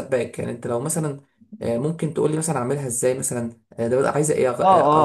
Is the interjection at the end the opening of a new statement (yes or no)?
yes